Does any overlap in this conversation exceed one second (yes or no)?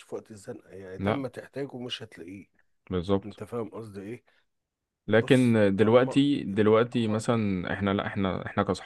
yes